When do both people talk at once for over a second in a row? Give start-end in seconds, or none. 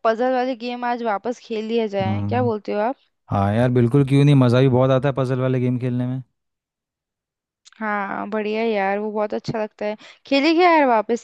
none